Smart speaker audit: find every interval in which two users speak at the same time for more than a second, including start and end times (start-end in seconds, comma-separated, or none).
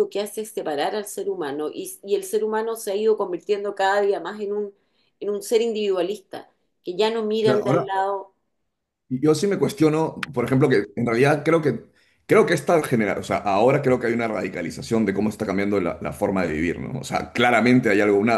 none